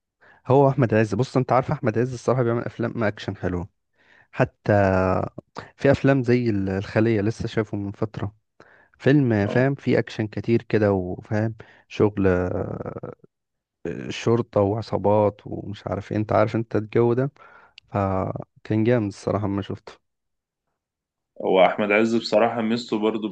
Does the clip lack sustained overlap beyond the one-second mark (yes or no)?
yes